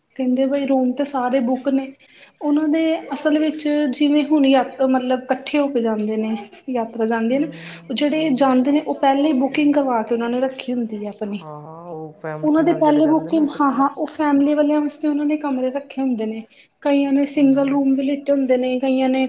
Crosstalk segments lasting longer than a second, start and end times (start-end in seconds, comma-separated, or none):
12.4-13.8